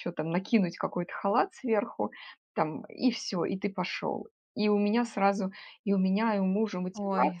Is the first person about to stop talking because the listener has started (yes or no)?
no